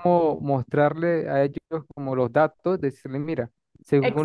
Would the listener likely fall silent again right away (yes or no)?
yes